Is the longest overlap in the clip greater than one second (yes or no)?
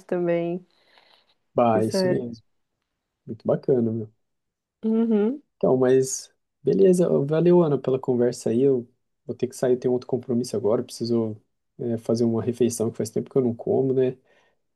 no